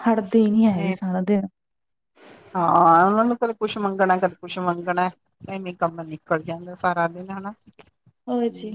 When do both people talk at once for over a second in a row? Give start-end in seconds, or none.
none